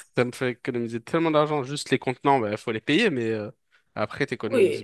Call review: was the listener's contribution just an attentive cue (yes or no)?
no